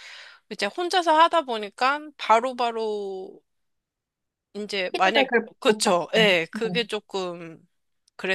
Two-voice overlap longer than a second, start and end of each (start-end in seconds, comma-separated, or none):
4.9-6.8